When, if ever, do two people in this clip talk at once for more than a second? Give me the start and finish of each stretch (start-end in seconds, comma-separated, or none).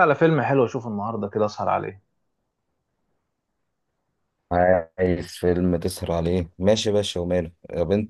none